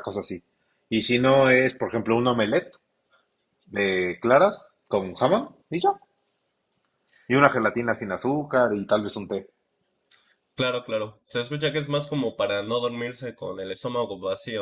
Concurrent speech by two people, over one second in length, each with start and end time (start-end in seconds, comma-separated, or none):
none